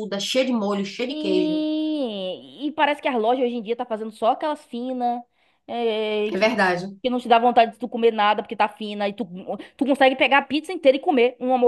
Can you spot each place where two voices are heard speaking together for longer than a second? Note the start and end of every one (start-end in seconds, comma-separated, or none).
none